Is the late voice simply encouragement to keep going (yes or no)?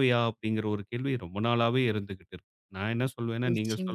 yes